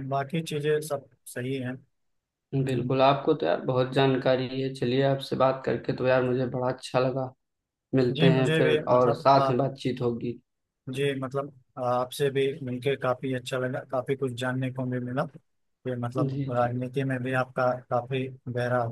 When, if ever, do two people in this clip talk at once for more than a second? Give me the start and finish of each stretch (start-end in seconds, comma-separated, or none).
8.2-9.6